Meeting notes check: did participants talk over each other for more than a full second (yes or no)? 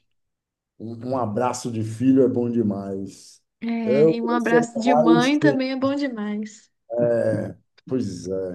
yes